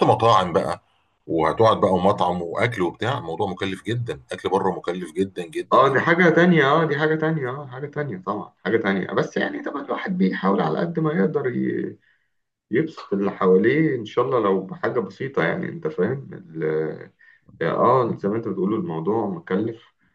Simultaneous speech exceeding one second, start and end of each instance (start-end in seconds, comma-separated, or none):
none